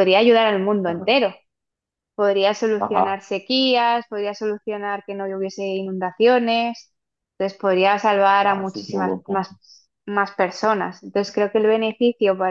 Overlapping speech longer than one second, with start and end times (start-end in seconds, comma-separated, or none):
8.3-9.5